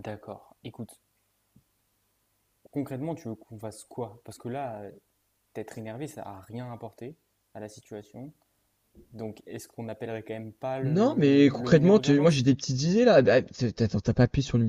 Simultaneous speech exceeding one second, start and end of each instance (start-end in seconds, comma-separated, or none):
10.8-12.4